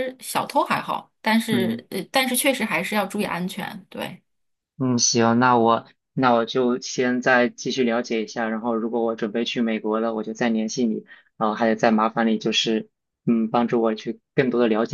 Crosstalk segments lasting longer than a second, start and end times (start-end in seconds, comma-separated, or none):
none